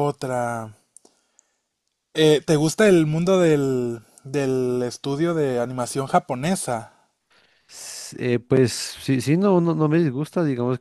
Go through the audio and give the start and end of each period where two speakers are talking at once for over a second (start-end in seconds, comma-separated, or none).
none